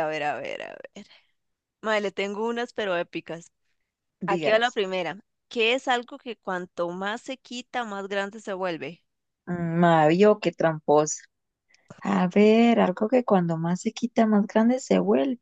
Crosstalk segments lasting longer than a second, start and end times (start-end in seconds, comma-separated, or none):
none